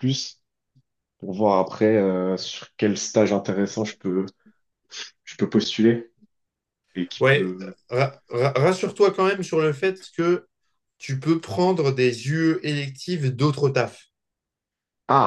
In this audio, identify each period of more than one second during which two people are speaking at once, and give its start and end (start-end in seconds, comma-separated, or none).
none